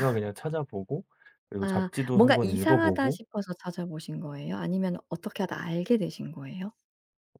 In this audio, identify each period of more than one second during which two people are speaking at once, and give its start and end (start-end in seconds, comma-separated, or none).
1.6-3.2